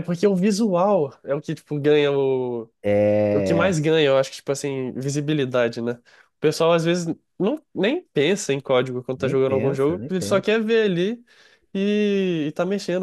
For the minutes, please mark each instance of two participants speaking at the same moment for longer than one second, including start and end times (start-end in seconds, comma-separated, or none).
9.2-10.5